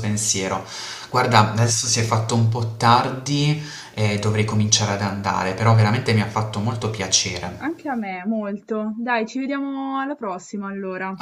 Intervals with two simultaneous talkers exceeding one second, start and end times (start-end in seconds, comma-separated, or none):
none